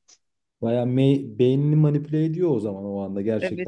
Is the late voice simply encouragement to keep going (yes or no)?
no